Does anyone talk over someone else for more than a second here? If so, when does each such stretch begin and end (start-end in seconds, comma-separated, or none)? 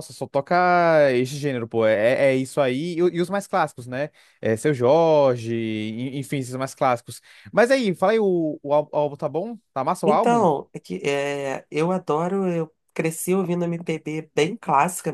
none